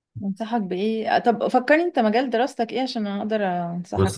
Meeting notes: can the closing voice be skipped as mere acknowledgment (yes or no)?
no